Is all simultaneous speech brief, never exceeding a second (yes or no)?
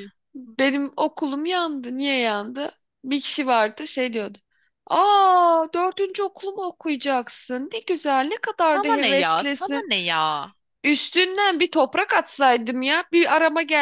no